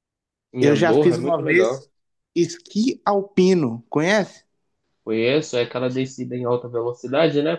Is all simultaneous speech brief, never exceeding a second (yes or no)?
no